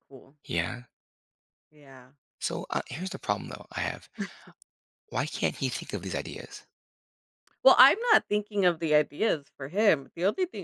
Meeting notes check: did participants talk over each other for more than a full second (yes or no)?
no